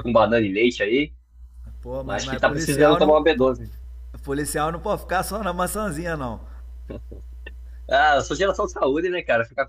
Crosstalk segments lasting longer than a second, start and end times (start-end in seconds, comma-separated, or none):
2.0-3.5